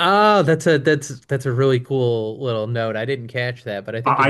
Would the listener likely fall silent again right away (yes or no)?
no